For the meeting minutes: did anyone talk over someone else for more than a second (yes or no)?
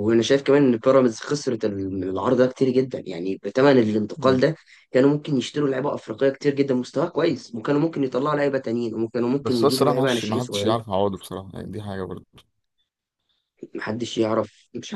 yes